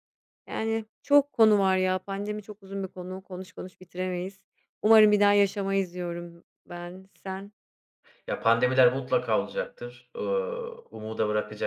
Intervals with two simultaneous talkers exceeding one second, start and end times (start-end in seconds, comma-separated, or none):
none